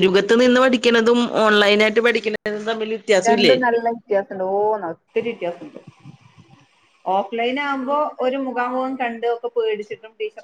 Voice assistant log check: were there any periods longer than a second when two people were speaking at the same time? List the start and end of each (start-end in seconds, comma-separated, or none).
none